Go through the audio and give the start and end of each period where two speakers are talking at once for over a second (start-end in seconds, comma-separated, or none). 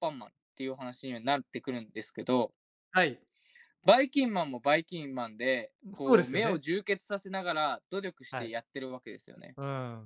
none